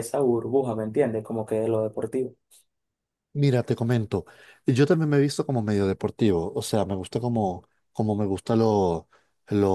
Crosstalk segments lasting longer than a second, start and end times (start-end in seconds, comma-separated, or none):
none